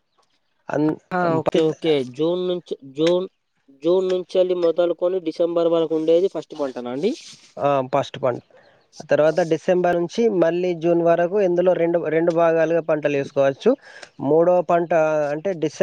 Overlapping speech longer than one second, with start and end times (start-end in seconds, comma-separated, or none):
none